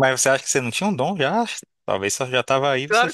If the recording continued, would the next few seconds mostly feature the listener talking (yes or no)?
yes